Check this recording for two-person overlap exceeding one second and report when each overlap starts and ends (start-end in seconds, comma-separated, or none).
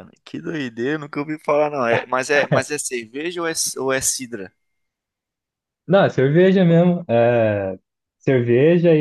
none